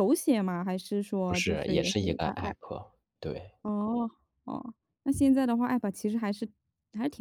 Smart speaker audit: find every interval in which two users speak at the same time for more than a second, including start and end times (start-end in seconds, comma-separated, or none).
1.3-2.5